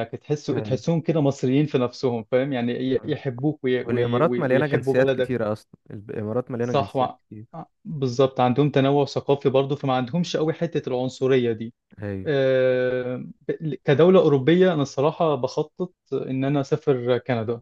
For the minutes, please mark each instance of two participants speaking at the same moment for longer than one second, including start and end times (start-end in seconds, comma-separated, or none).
3.8-5.3